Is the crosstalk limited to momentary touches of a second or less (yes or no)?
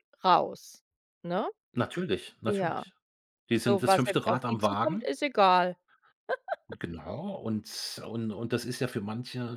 no